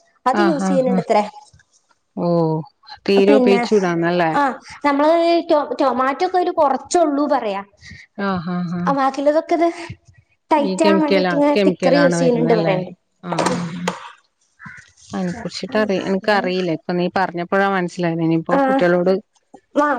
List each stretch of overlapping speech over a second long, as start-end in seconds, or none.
none